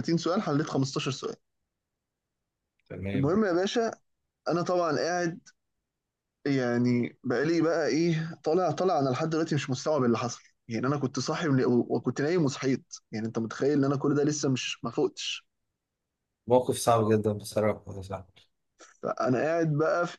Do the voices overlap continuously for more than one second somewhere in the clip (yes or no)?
no